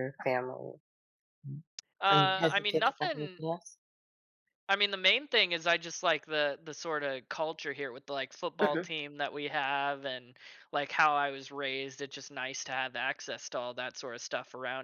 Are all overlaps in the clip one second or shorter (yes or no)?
no